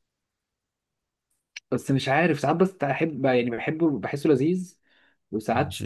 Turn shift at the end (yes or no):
no